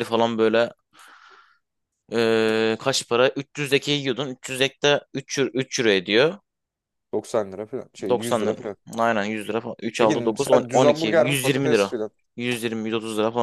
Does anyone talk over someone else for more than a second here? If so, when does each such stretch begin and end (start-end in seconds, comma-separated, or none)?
10.0-11.9